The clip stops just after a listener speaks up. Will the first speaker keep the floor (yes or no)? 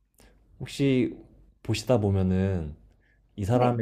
yes